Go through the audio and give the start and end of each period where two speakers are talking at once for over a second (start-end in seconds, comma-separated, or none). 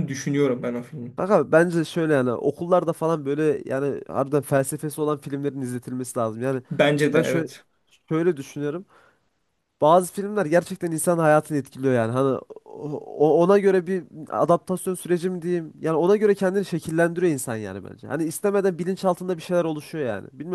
none